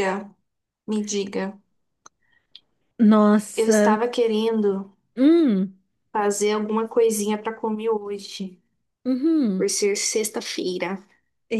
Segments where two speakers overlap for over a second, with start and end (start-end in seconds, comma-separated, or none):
none